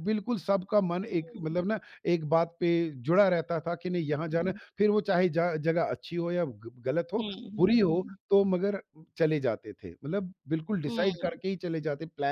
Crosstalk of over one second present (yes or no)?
no